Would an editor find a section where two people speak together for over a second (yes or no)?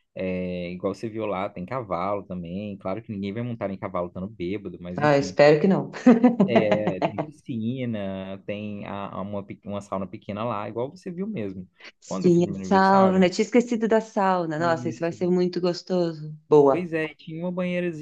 yes